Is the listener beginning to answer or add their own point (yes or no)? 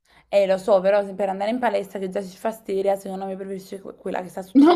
yes